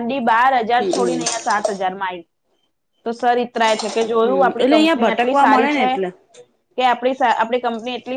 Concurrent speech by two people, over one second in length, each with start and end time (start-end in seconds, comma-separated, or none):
4.2-5.9